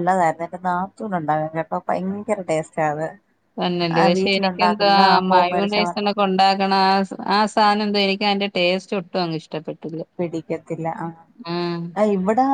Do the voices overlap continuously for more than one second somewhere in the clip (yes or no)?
yes